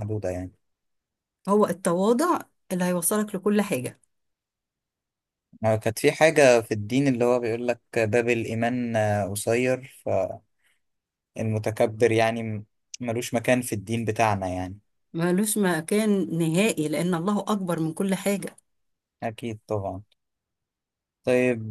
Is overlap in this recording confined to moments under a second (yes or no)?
yes